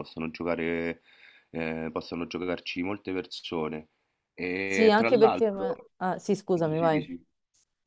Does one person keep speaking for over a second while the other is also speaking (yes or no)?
yes